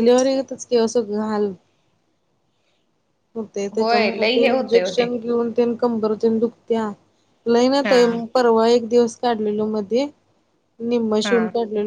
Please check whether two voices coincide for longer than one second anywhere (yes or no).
yes